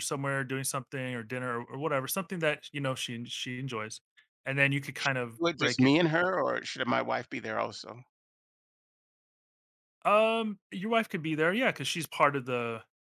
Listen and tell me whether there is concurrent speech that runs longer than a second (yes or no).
no